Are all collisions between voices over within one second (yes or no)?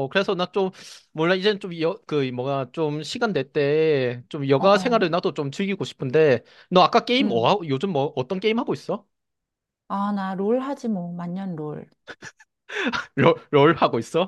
yes